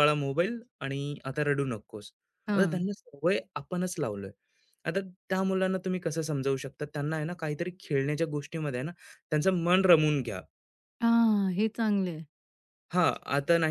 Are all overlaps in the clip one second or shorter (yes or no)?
yes